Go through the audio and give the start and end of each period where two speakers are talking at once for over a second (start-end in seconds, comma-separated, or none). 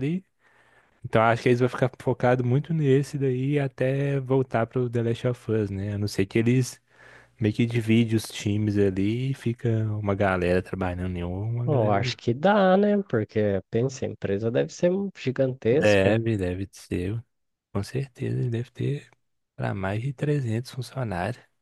none